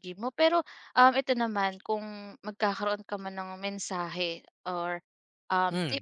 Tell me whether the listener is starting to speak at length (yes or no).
no